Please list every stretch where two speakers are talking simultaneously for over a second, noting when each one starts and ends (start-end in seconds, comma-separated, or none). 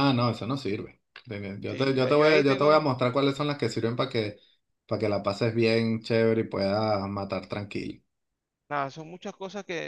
1.7-2.9